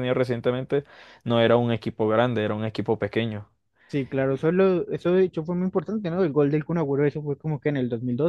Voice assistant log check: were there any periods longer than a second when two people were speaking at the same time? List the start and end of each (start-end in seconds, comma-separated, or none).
none